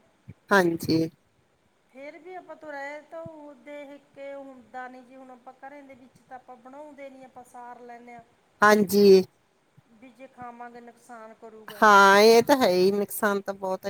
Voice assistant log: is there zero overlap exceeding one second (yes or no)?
yes